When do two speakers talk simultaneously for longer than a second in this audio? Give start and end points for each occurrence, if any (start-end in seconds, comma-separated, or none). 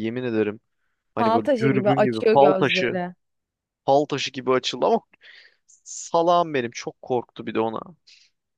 1.2-3.0